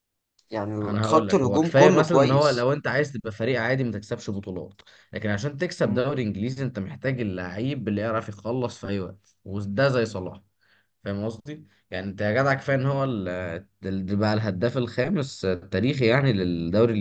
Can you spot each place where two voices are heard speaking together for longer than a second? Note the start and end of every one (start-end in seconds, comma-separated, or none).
0.8-2.7